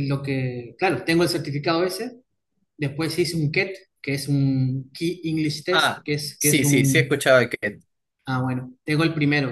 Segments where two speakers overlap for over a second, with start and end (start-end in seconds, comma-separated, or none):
5.7-7.2